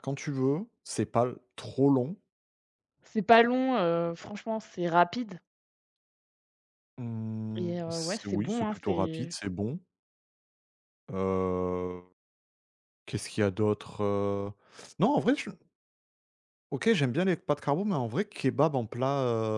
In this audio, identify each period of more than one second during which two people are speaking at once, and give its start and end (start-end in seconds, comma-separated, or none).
7.6-9.3